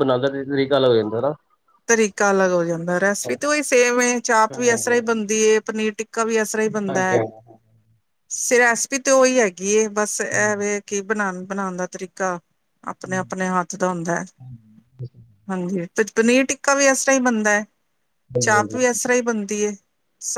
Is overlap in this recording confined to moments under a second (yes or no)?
yes